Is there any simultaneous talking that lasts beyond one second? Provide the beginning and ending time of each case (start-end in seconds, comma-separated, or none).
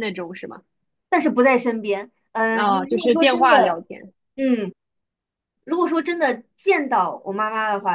2.5-3.8